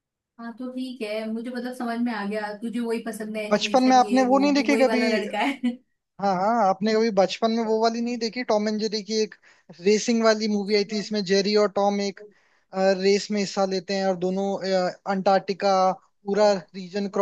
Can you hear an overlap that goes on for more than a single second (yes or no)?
yes